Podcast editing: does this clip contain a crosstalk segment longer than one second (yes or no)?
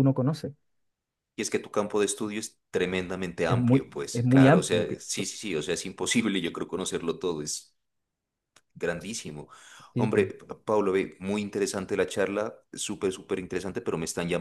yes